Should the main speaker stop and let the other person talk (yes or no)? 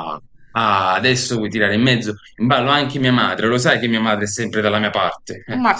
yes